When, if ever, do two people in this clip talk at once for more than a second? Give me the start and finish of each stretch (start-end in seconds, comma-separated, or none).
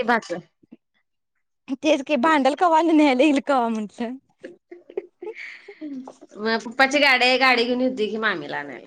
none